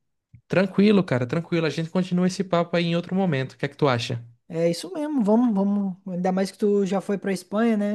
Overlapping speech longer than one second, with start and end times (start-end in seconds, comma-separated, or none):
none